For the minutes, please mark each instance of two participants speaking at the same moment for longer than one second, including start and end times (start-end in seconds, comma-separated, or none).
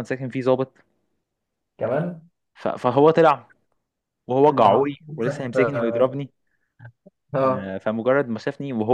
4.5-6.2